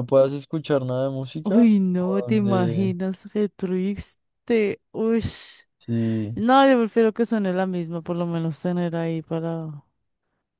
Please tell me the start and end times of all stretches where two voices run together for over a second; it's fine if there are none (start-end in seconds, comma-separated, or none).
1.4-3.0